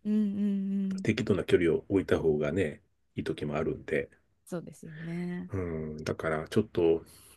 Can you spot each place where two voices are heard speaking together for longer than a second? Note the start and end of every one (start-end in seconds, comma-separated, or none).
none